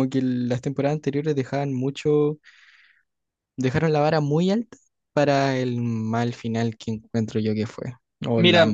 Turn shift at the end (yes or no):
no